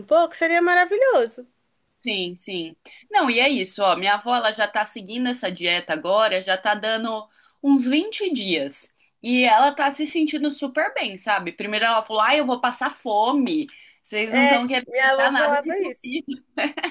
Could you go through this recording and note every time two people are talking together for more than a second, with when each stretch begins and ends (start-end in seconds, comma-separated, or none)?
14.3-16.1